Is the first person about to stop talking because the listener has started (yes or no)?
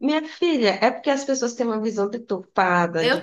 no